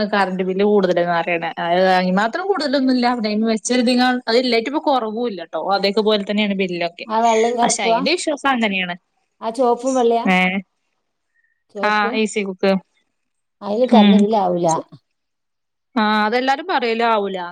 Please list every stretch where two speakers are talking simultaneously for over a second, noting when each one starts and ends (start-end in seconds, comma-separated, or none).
none